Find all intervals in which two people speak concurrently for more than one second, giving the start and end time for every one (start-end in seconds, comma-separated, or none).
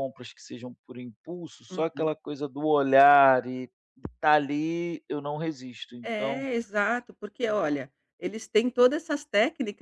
none